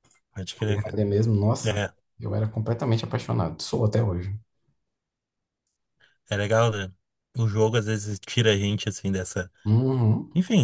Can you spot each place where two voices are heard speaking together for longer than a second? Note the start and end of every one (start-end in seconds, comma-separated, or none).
none